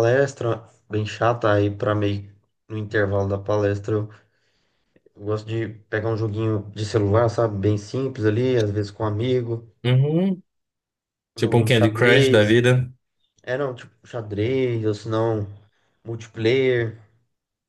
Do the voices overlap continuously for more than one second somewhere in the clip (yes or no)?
yes